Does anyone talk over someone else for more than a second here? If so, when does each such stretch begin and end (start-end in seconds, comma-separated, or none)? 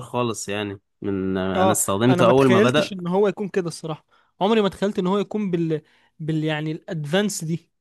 1.5-2.9